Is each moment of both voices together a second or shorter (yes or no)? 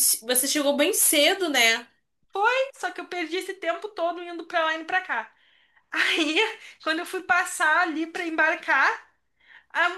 yes